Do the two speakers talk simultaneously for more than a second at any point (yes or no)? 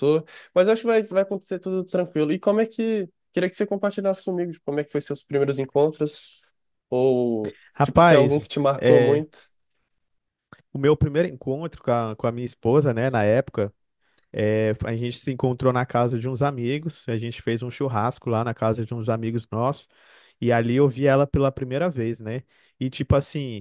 yes